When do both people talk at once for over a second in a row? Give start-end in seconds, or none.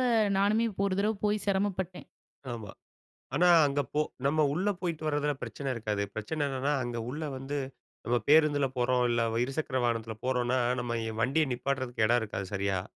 none